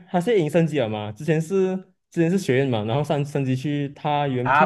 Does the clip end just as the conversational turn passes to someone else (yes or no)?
yes